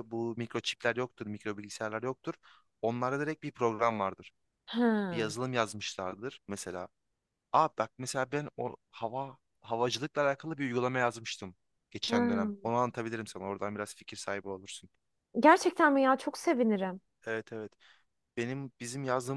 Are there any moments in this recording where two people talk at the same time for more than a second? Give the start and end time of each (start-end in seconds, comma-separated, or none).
none